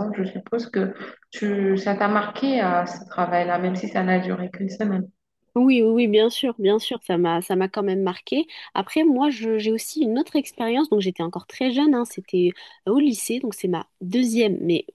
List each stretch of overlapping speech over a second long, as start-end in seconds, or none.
none